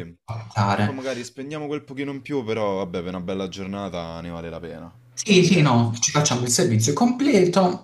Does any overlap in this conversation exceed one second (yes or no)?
no